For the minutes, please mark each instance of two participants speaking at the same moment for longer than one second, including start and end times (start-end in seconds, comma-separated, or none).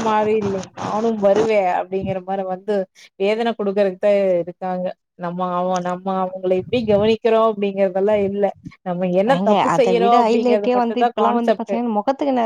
9.3-11.8